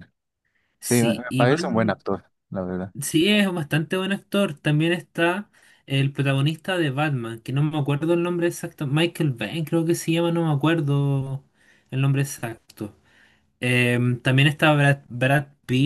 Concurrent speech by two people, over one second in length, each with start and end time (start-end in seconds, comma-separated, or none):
0.8-2.0